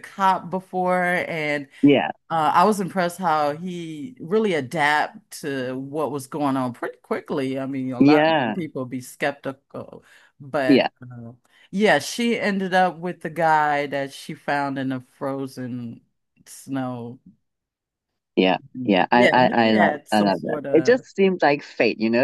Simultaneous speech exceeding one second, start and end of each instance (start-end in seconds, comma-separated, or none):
18.8-21.0